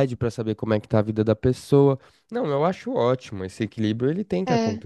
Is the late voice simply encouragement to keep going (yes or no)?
yes